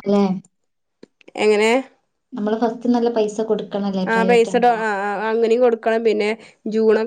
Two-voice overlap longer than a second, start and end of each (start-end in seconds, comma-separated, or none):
none